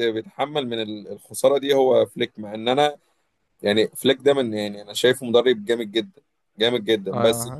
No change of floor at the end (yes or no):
no